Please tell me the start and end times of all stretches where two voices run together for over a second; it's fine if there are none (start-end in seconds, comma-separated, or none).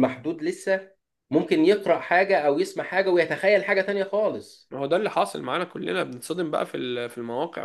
none